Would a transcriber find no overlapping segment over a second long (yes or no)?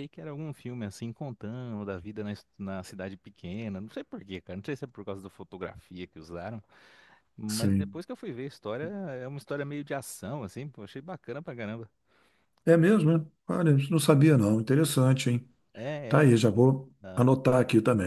yes